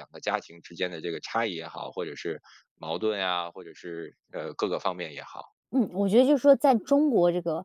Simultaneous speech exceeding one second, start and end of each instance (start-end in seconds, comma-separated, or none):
none